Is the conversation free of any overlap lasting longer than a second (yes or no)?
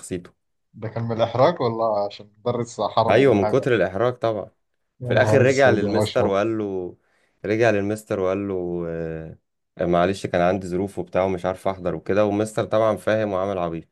no